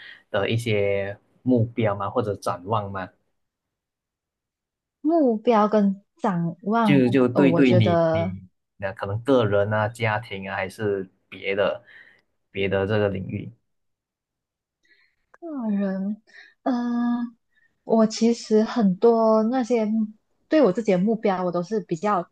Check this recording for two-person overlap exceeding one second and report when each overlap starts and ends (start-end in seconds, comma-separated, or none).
6.8-8.4